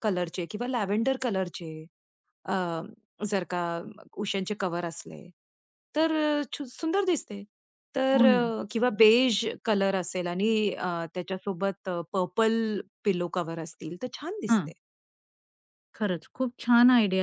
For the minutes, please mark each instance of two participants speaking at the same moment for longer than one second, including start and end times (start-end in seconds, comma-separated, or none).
none